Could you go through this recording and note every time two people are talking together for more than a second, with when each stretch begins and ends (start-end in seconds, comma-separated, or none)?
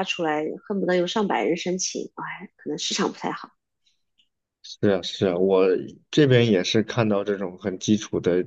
none